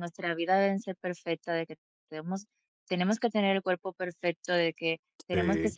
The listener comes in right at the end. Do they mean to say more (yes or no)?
no